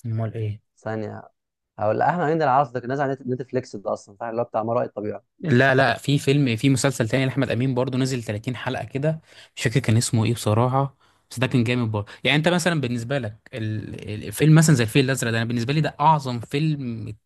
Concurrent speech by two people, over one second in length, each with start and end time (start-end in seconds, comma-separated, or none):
none